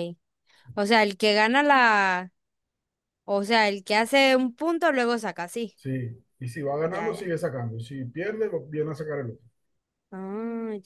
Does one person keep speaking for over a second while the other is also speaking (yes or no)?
no